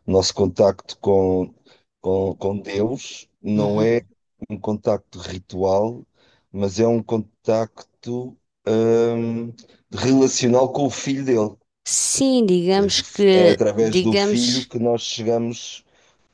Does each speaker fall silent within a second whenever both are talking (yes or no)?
no